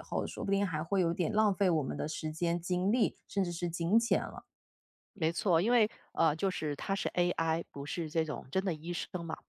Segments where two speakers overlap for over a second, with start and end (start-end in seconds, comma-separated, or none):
none